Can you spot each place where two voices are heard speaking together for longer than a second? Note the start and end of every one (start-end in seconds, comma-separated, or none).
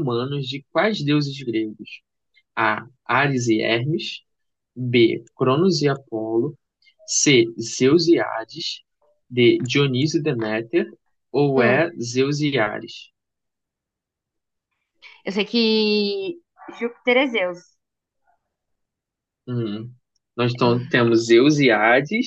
none